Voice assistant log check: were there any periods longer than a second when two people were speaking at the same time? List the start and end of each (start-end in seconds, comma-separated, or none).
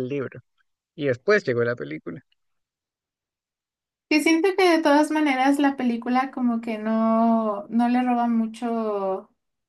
none